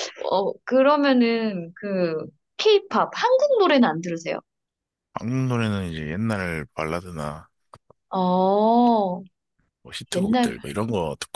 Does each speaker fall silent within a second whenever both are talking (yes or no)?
yes